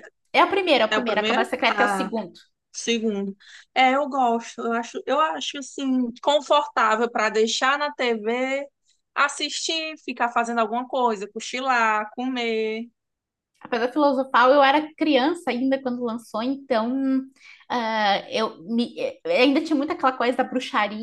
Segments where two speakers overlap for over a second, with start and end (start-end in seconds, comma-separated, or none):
0.9-2.1